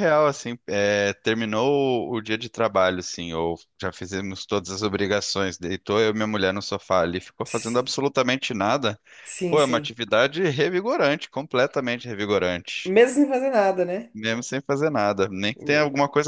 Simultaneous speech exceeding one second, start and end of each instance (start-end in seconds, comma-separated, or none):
none